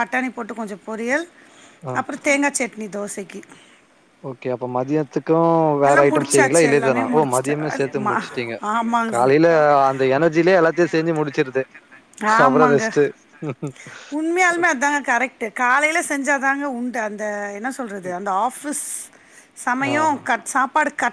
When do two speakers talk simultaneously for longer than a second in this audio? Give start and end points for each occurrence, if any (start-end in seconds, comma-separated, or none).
5.9-8.0